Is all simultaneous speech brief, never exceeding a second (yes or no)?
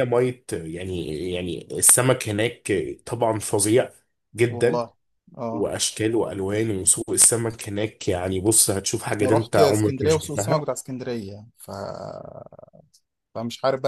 no